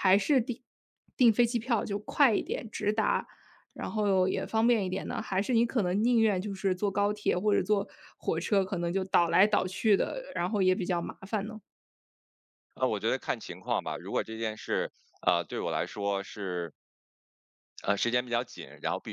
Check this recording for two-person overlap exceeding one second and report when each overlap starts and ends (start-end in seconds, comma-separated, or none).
none